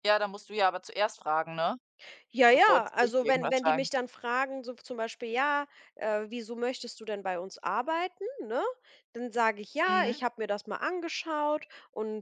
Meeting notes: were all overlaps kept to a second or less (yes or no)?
no